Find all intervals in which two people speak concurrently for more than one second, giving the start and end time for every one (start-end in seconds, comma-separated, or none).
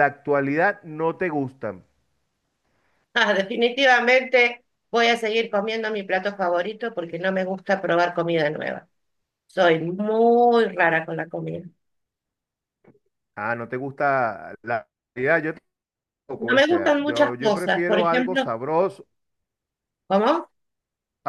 16.4-18.5